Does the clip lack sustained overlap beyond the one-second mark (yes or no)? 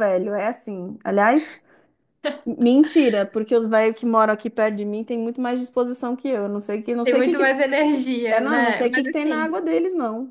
no